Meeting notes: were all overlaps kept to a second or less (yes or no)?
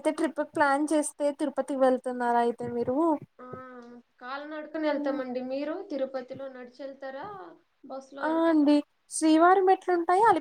yes